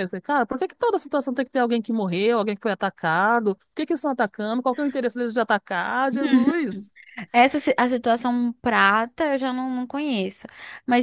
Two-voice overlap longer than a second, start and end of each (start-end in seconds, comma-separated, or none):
none